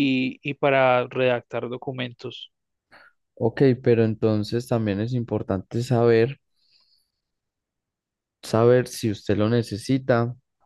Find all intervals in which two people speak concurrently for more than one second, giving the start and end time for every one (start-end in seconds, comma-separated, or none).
none